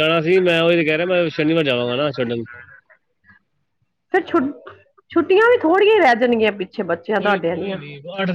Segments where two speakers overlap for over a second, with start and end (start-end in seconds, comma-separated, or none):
none